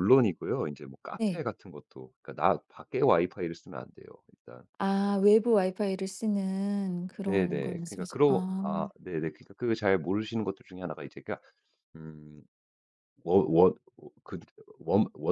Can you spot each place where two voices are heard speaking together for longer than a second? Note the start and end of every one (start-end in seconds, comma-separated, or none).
7.2-8.7